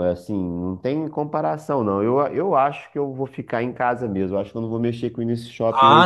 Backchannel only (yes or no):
no